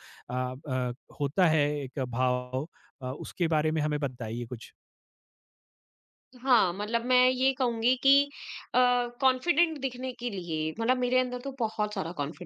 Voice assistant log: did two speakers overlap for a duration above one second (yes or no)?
no